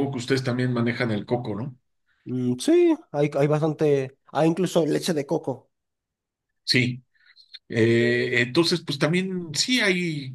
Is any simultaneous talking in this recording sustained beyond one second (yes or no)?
no